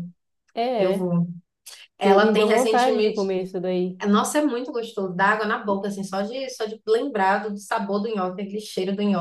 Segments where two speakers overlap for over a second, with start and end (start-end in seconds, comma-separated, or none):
2.0-3.2